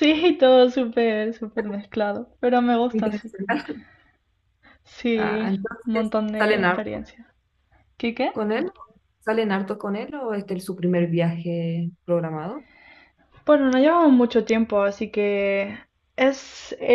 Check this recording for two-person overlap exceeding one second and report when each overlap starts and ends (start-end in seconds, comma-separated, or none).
5.2-7.0